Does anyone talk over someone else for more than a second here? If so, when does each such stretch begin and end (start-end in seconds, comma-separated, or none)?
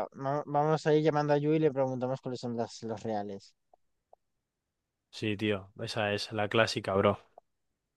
none